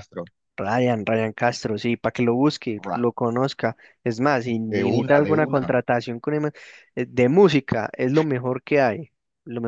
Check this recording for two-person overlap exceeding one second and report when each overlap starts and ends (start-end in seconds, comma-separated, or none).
4.6-5.8